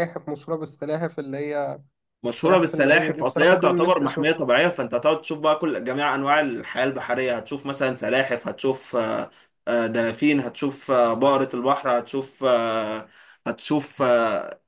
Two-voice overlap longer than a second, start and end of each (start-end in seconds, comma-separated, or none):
2.4-4.5